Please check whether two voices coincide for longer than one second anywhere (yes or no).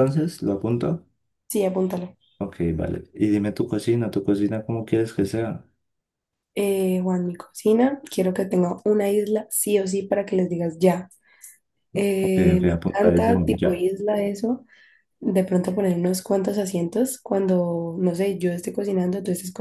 yes